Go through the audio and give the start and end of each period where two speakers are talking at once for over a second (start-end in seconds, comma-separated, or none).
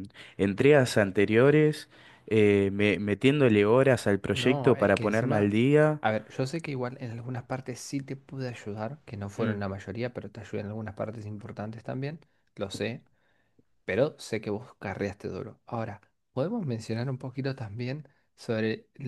4.3-5.5